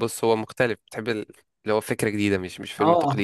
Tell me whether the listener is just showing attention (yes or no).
no